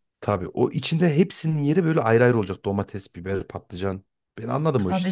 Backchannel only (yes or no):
no